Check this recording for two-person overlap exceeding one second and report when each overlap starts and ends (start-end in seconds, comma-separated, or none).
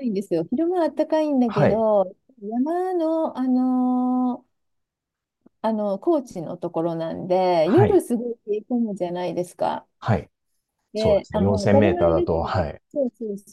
10.9-12.8